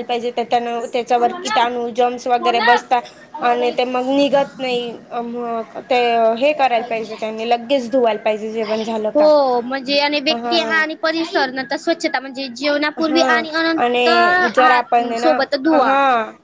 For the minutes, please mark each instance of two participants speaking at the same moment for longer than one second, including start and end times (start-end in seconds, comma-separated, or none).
none